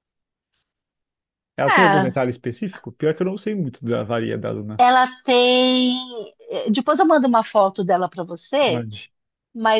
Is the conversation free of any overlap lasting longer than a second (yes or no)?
yes